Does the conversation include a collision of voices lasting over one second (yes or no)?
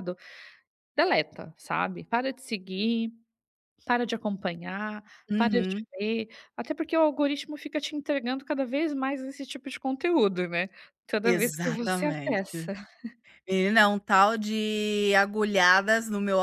yes